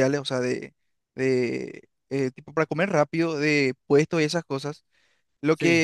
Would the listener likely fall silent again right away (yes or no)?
yes